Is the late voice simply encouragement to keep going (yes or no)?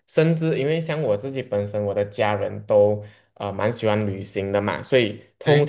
yes